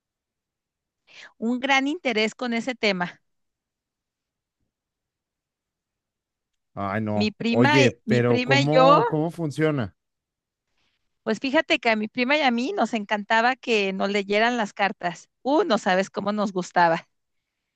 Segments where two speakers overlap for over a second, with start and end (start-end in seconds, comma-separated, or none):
7.1-9.0